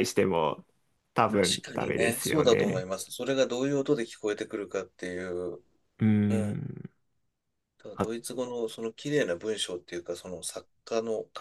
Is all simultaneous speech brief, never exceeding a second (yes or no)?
no